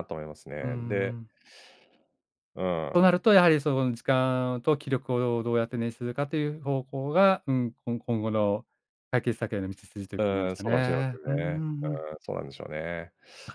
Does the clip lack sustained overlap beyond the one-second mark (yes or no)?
no